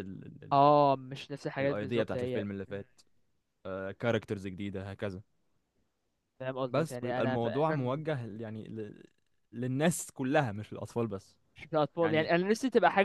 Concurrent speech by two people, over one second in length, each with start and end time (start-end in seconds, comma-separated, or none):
1.6-2.9, 6.7-8.0